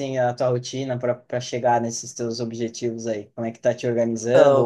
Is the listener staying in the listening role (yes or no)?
yes